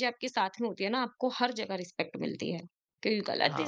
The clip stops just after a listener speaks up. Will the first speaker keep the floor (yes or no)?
yes